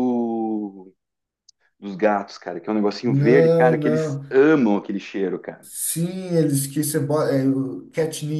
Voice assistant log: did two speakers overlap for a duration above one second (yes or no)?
yes